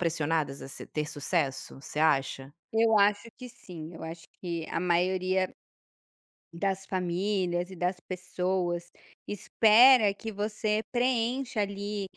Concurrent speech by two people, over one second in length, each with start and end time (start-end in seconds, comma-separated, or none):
none